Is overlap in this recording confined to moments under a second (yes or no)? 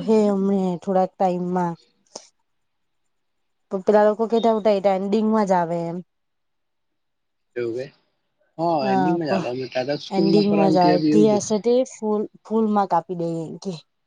no